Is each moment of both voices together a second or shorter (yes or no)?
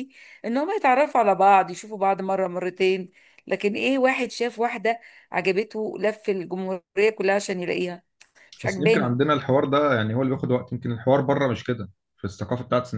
yes